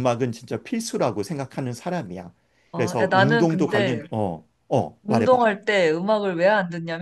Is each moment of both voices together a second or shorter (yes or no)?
no